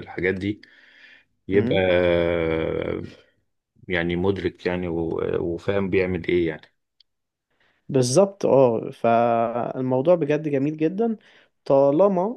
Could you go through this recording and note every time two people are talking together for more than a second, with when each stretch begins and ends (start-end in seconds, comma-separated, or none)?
none